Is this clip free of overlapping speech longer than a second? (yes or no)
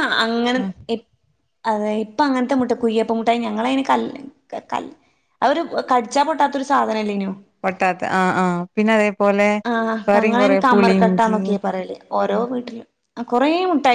no